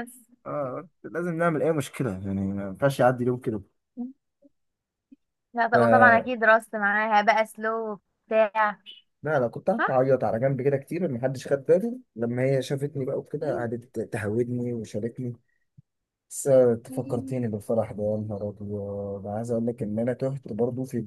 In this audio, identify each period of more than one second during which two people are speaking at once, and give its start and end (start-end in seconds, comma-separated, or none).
none